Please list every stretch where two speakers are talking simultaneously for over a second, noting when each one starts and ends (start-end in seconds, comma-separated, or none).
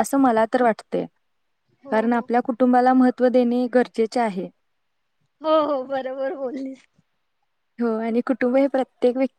none